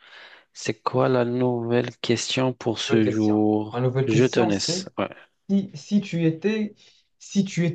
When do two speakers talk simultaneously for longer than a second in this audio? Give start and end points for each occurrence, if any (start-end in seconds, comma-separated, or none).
2.9-4.8